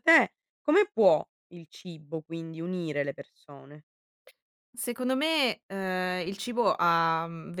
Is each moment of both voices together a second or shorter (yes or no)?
yes